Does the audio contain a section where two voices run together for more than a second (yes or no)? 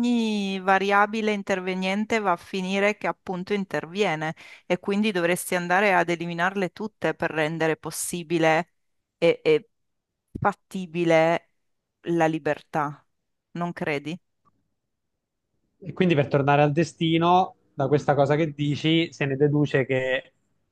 no